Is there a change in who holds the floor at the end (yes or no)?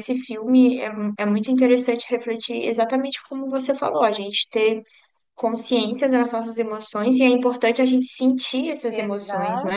yes